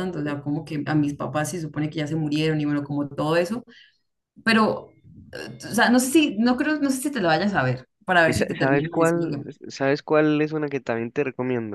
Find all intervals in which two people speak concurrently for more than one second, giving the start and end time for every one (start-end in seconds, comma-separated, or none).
8.2-9.6